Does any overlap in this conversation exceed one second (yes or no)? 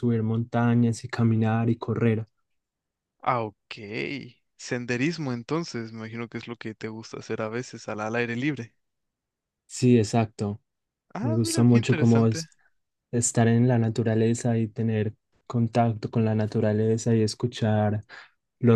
yes